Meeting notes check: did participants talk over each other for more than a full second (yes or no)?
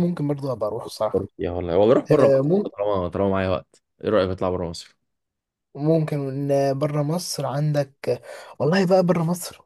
no